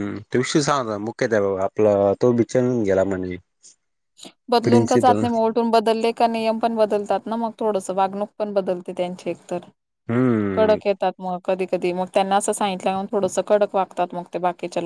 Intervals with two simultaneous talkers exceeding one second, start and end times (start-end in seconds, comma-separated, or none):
none